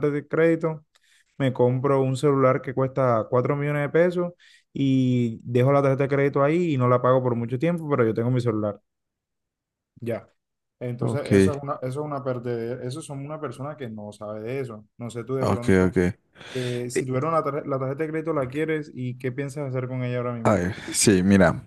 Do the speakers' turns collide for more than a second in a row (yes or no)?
no